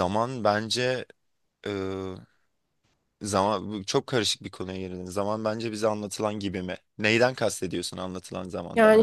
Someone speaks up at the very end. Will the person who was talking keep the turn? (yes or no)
no